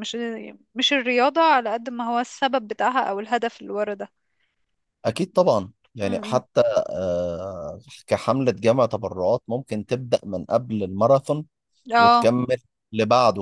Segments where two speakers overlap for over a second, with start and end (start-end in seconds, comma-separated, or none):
none